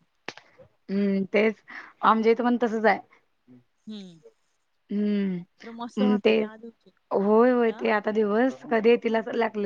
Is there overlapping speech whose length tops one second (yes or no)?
no